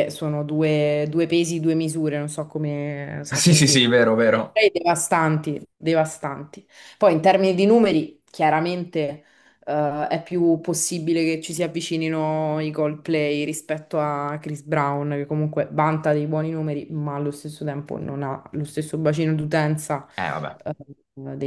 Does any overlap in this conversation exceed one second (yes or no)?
yes